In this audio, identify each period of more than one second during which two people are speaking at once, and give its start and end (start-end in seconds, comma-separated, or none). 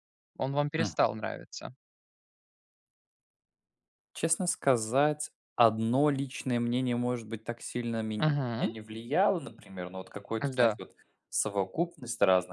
none